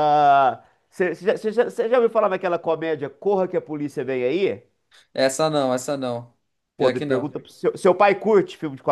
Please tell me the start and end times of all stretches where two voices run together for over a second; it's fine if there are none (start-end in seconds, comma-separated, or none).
none